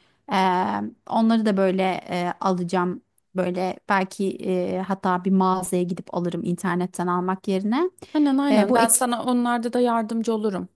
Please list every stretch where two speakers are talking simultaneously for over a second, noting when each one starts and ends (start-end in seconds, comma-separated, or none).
none